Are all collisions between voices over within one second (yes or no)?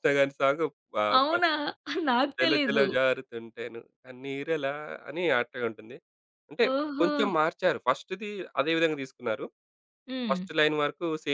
yes